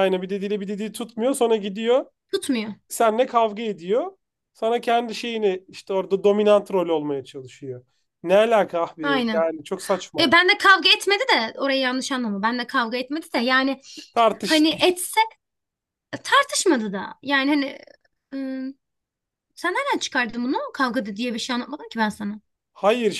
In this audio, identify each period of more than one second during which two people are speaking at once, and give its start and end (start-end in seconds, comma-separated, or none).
none